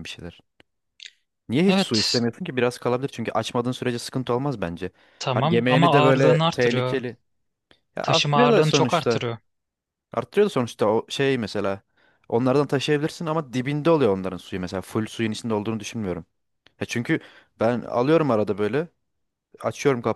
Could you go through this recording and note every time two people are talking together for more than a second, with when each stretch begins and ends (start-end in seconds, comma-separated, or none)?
5.3-7.0, 8.0-9.2